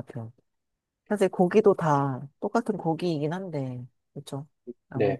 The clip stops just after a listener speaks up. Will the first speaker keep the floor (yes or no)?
no